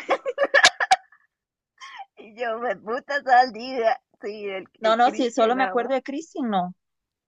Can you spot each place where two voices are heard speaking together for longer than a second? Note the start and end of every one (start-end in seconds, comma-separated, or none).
4.8-6.0